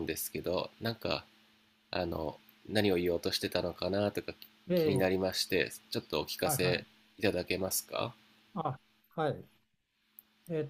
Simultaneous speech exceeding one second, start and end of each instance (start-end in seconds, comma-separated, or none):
none